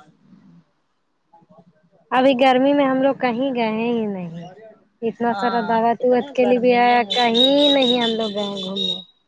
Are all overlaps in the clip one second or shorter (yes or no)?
no